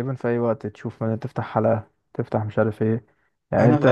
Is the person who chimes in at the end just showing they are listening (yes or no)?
yes